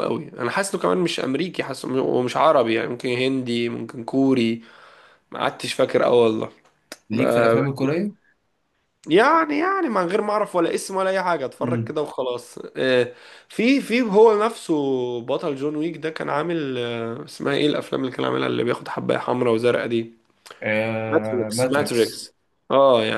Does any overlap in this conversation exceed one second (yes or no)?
yes